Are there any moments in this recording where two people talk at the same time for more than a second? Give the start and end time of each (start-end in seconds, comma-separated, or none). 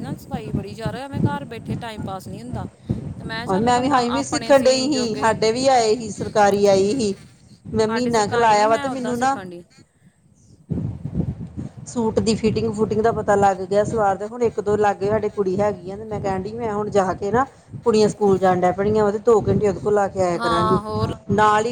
3.5-5.3, 7.7-9.4